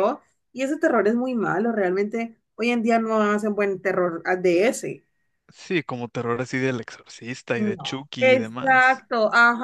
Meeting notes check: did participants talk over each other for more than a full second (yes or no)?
yes